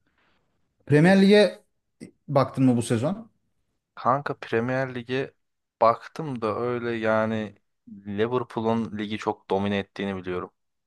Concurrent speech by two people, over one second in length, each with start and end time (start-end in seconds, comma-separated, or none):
none